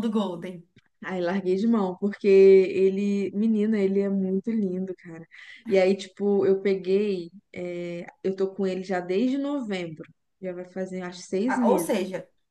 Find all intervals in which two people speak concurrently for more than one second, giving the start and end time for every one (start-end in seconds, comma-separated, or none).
none